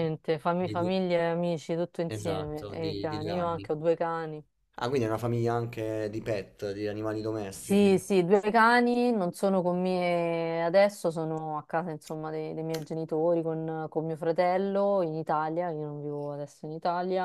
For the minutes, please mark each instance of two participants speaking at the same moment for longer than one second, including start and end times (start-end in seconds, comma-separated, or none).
2.1-3.7